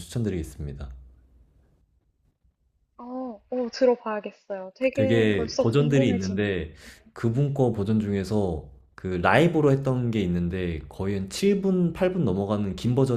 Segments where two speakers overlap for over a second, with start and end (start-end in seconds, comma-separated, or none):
4.9-6.6